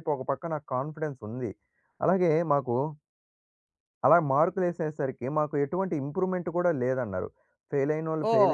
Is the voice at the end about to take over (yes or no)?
yes